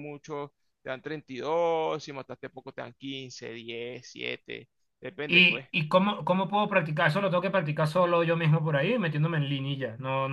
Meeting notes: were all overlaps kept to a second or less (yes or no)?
yes